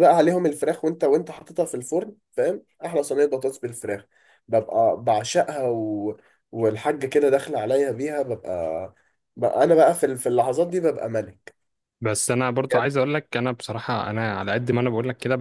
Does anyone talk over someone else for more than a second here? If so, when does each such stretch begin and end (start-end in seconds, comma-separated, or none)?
none